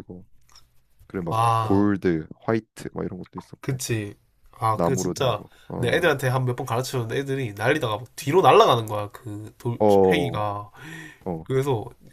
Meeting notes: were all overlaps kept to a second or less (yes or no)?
no